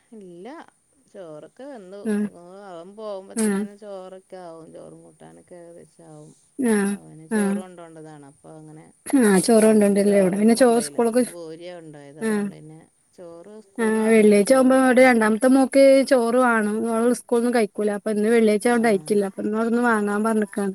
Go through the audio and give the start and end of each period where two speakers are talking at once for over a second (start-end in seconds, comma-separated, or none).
9.6-11.2